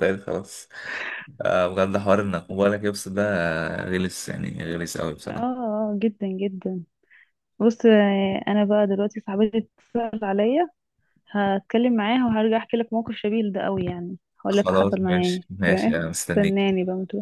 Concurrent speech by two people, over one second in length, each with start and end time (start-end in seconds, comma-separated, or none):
14.5-16.7